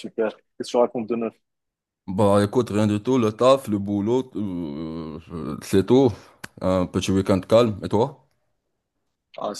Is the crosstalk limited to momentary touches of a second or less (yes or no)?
yes